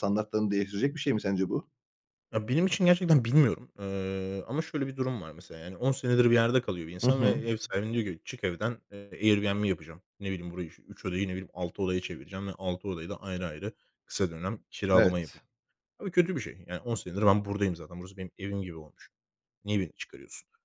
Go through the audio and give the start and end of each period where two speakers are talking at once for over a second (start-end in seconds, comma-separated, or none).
none